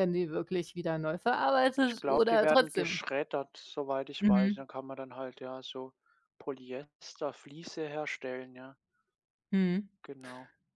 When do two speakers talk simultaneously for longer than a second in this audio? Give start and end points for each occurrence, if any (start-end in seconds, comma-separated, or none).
1.8-3.0